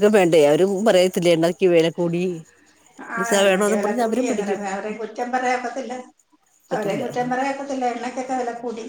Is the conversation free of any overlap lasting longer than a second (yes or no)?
no